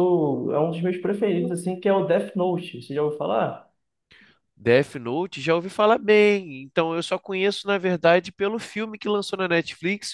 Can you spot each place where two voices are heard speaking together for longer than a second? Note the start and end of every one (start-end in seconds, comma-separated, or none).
none